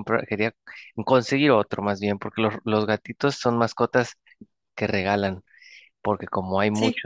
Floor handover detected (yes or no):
no